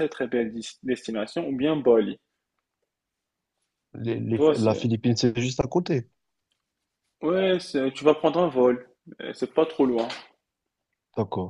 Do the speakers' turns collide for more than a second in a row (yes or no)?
no